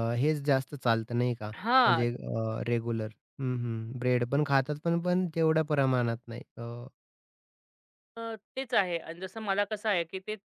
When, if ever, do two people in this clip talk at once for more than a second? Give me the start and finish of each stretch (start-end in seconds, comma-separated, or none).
none